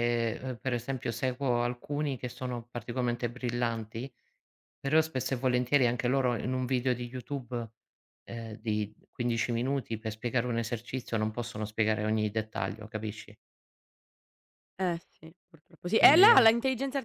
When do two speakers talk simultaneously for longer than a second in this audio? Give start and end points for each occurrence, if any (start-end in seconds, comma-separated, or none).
none